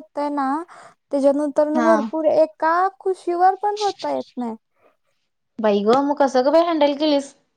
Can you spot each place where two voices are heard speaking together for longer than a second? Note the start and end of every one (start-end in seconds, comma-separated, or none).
none